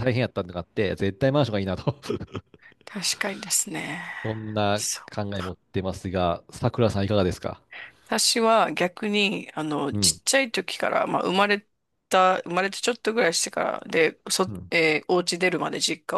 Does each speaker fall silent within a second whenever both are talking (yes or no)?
yes